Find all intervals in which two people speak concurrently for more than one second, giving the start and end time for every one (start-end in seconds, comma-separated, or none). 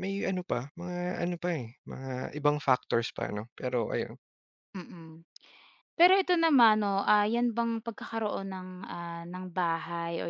none